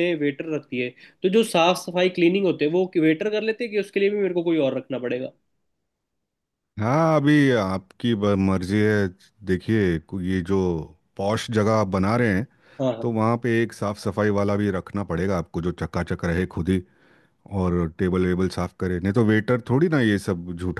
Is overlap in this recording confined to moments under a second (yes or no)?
yes